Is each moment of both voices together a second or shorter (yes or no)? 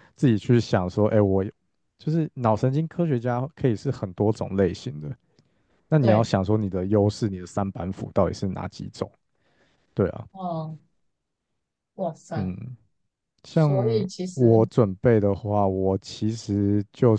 yes